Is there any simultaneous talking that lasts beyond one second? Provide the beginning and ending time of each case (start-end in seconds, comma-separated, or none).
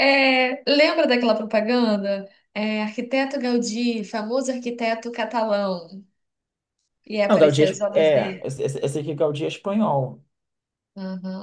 7.3-8.5